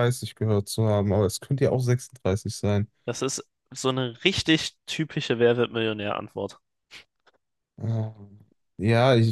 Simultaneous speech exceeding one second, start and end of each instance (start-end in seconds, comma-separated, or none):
none